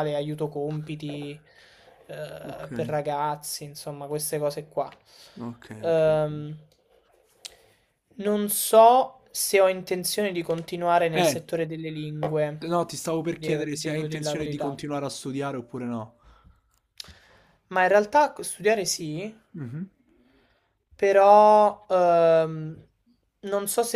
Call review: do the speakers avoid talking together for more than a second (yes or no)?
no